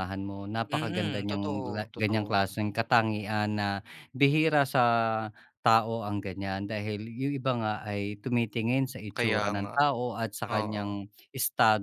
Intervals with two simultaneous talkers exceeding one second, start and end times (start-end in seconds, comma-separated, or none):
0.7-2.3